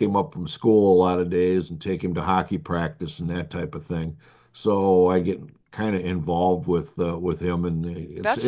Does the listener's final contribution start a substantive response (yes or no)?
yes